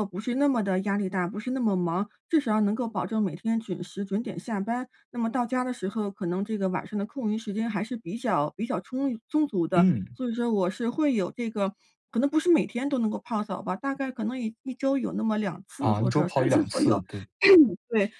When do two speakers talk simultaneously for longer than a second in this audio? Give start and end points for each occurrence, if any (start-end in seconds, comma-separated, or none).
15.8-17.0